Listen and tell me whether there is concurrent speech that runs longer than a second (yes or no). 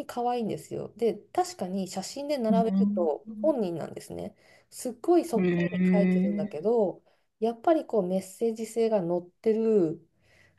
yes